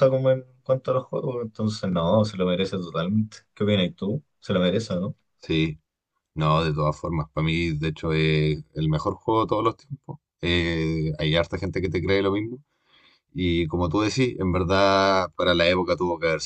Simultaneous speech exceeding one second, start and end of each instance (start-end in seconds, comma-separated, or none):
none